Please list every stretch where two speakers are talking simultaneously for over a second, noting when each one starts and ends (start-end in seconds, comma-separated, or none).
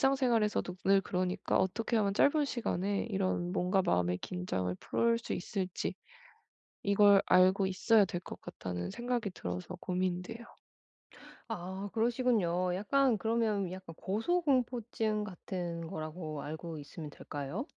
none